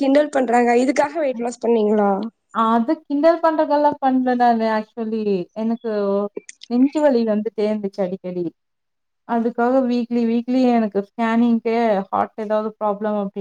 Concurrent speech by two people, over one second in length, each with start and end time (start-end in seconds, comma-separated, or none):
none